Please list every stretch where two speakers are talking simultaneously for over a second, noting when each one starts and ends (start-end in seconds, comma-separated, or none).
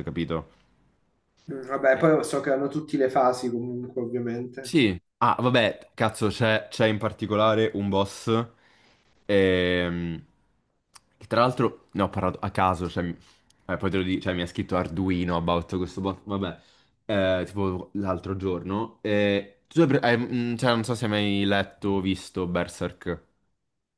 none